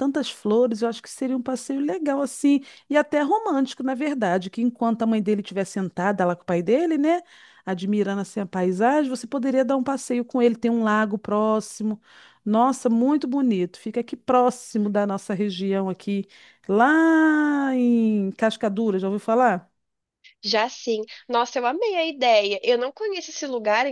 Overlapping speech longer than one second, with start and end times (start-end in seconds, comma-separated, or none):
none